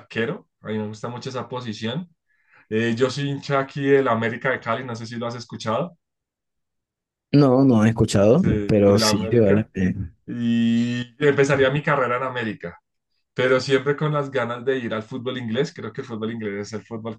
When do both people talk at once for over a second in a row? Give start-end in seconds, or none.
8.3-9.7